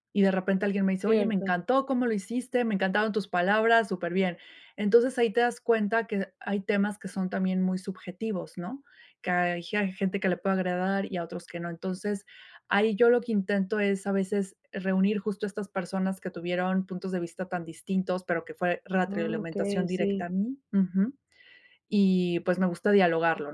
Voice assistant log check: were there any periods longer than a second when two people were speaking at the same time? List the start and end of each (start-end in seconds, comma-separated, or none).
19.0-20.3